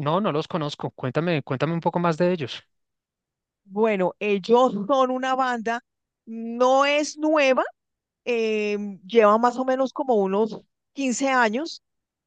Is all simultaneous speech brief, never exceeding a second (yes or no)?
yes